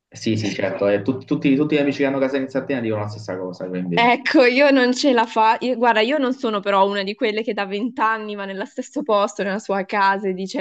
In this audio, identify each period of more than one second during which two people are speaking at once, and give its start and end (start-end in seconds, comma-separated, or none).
none